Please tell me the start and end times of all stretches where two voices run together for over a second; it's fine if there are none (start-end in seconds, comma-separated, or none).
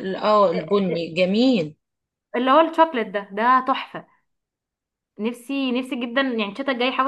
none